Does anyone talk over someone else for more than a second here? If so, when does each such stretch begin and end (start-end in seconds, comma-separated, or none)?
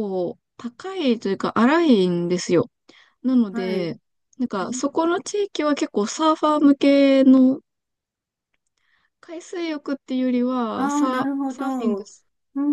10.7-12.0